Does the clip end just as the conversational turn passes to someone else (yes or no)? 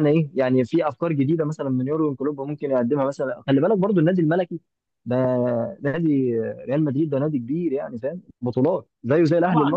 yes